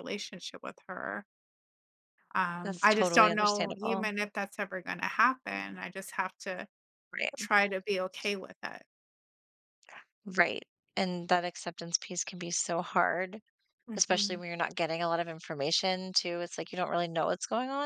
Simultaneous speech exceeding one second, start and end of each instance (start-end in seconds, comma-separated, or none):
2.6-4.1